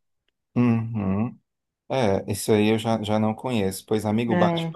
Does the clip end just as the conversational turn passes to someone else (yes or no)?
no